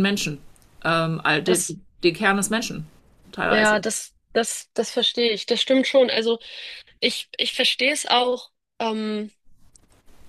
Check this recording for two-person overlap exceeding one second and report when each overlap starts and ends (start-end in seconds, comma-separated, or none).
none